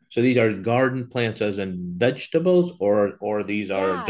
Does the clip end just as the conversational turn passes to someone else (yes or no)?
yes